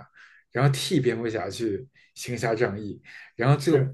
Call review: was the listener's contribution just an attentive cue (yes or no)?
yes